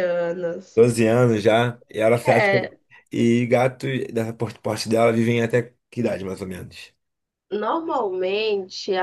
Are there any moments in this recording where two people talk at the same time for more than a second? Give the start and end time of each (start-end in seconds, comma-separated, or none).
none